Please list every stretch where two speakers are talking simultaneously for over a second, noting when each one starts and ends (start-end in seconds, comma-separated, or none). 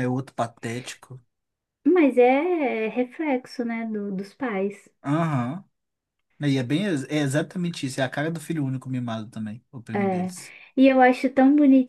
none